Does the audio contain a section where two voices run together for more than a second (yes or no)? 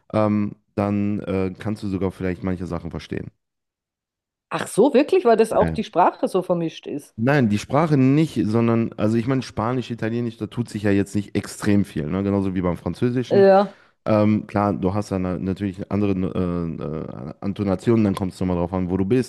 no